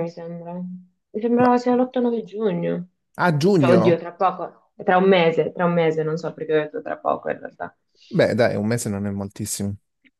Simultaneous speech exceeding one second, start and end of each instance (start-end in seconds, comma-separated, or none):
none